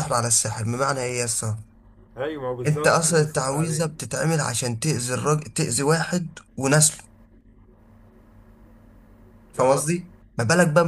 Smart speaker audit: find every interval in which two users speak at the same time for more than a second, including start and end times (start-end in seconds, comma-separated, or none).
2.7-3.9